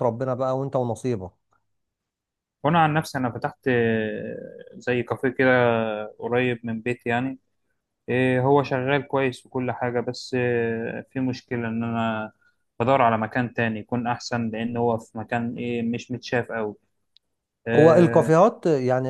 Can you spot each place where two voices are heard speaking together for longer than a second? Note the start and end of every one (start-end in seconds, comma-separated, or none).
none